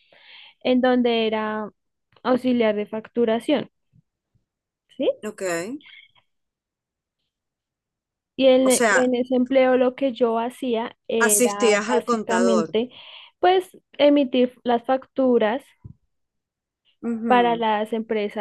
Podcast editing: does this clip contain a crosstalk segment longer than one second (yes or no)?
yes